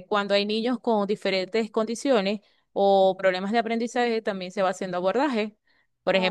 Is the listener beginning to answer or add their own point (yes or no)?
no